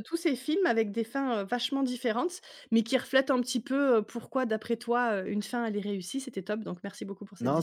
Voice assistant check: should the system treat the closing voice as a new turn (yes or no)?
yes